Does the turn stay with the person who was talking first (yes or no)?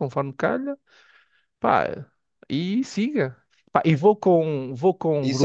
no